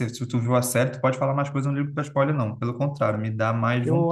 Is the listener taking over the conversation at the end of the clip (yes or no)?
yes